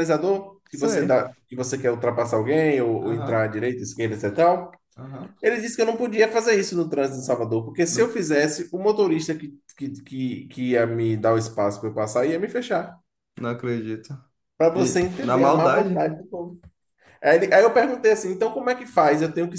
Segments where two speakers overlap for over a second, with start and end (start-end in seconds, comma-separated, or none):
14.7-16.0